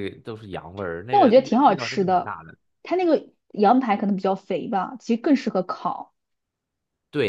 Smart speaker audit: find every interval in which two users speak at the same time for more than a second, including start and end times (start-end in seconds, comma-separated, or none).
1.1-2.3